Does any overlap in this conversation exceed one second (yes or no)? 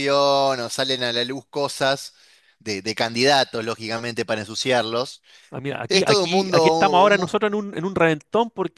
yes